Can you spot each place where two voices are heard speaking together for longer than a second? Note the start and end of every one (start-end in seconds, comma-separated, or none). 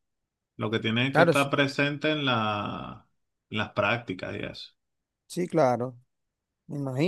none